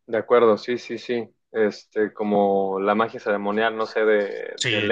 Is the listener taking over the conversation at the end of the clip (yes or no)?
yes